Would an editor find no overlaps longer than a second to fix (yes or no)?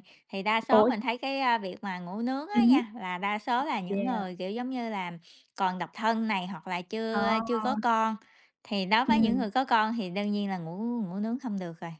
yes